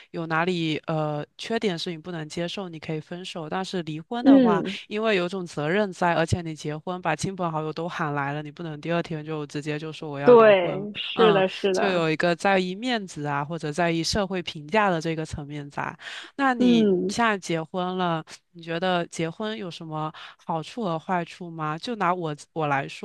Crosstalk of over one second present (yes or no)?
yes